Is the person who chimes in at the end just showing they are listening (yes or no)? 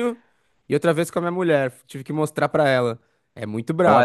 no